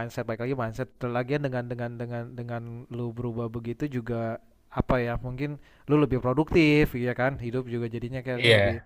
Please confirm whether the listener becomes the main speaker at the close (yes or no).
no